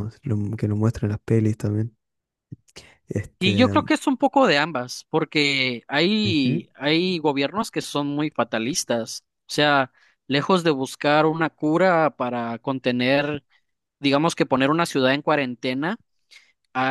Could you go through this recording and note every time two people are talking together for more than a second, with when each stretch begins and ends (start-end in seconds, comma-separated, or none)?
none